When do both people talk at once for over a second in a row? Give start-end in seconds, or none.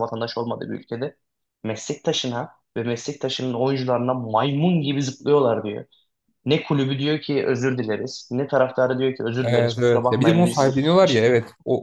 9.4-11.3